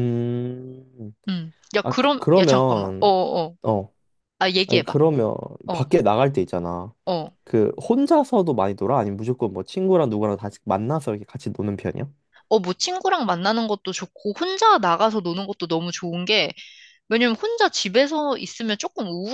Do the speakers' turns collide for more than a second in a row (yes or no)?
yes